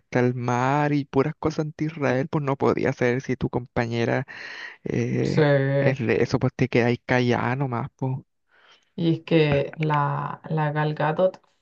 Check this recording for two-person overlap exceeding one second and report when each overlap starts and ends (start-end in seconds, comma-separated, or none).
none